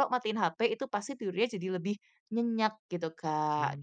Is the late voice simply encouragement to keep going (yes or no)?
no